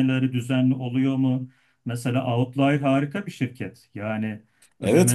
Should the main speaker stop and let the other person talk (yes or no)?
yes